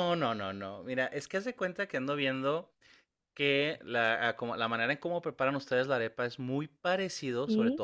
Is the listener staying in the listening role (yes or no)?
yes